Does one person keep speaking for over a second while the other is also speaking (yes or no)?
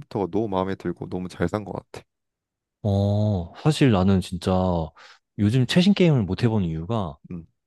no